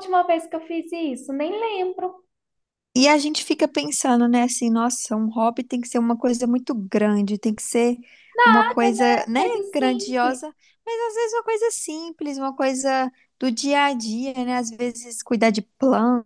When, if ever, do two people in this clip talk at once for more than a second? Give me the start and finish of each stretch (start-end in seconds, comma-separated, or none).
8.5-10.4